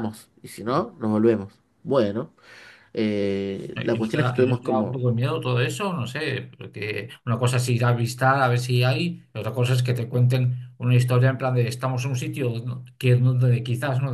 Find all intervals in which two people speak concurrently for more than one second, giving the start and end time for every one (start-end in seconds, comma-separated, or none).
3.7-5.1